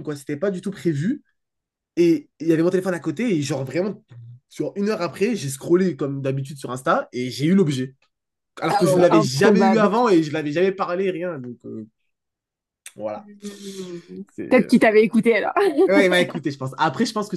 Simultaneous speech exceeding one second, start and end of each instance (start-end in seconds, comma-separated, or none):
8.7-9.9